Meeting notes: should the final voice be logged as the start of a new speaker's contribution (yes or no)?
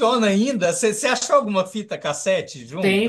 yes